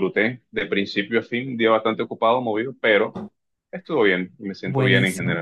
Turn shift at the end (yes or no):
yes